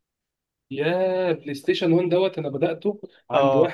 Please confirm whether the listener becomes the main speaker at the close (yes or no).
no